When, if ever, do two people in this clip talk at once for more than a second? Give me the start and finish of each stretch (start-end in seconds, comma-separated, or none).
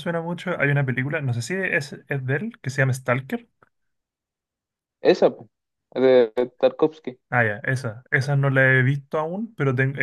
none